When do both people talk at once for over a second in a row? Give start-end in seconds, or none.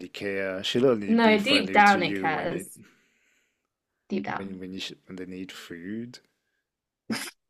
1.1-2.6